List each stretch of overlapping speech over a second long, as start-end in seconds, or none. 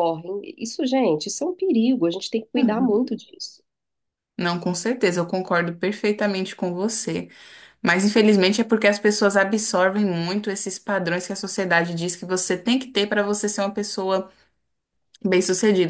none